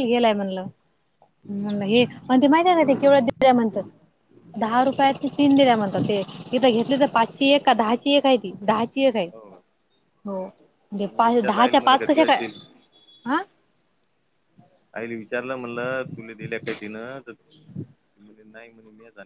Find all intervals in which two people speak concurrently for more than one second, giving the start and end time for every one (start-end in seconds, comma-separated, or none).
11.0-12.4